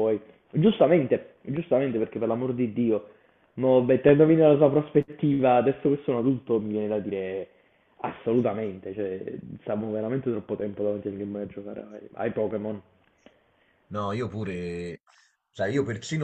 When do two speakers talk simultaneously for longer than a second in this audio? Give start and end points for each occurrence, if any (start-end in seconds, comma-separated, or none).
none